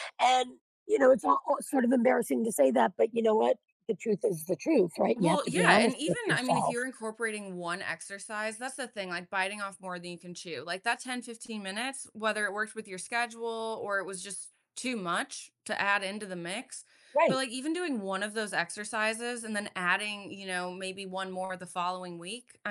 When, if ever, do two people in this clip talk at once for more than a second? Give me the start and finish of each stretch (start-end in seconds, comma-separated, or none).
5.2-6.8